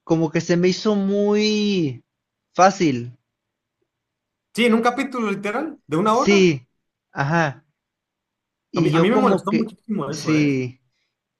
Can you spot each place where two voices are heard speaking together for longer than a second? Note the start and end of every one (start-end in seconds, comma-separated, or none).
8.8-10.6